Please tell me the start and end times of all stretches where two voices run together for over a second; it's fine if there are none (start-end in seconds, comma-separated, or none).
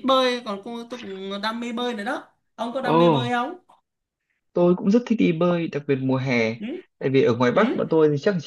none